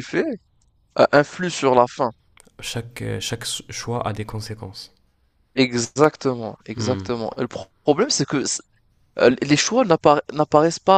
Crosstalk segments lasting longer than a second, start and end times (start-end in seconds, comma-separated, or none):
none